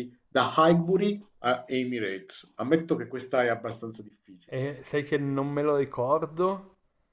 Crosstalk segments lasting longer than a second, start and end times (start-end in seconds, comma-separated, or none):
none